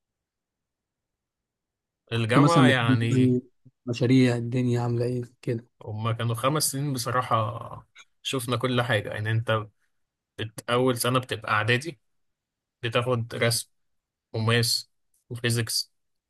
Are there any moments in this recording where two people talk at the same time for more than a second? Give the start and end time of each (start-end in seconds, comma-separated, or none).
2.1-3.3